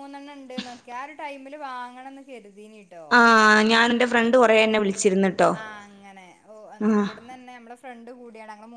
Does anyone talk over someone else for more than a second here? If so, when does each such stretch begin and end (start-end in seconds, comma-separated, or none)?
none